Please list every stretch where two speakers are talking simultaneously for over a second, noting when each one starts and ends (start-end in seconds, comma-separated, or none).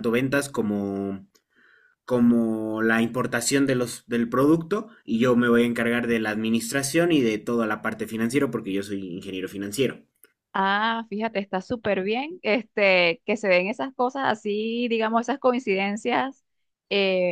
none